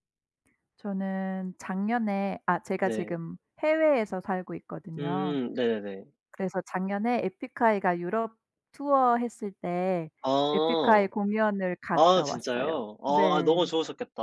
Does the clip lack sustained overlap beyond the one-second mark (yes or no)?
no